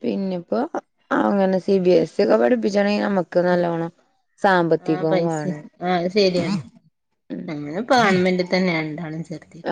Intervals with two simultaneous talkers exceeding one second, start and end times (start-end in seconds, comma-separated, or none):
none